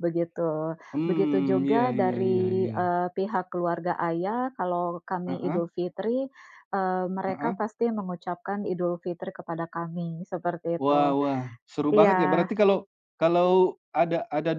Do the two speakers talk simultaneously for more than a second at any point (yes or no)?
yes